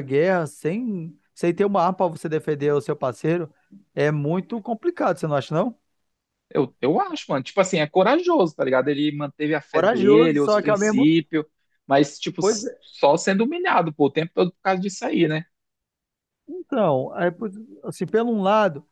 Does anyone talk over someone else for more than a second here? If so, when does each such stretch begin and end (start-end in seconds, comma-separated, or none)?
9.7-11.1